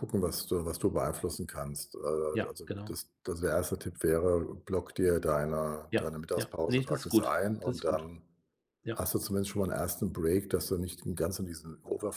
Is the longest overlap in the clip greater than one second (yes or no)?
yes